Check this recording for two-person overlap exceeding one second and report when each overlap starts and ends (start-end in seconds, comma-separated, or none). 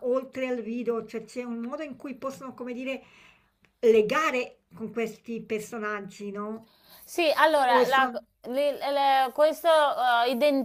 none